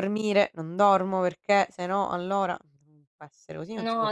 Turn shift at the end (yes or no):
yes